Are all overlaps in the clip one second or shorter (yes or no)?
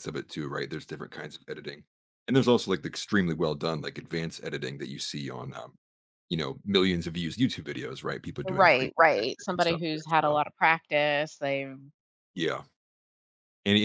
no